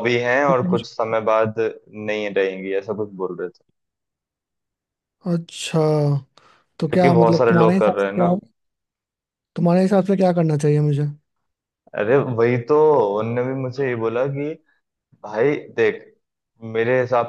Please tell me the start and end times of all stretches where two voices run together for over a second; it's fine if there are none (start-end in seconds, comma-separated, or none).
6.9-8.3